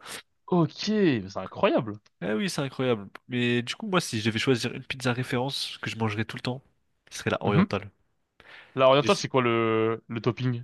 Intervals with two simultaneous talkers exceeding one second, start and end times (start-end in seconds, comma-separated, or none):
none